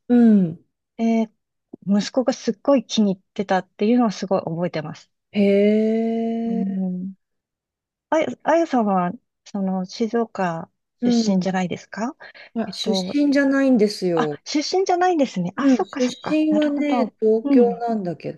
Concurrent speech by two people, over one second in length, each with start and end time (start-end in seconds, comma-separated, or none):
15.6-17.9